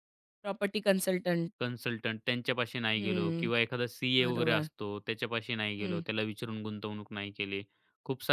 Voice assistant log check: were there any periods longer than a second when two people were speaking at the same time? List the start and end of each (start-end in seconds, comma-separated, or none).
none